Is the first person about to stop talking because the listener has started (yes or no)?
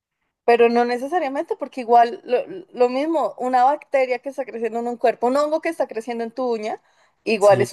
no